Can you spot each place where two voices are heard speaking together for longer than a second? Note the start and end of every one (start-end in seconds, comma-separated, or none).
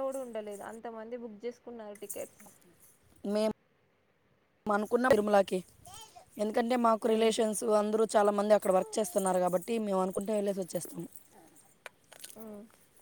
none